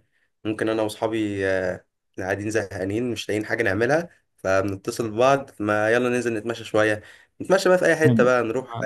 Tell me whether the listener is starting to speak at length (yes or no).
no